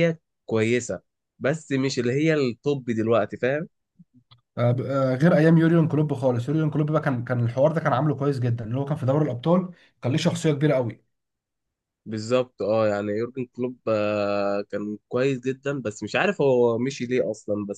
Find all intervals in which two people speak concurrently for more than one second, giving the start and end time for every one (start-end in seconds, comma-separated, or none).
none